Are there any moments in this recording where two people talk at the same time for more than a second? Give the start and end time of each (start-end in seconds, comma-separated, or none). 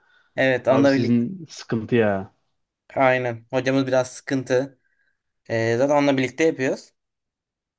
none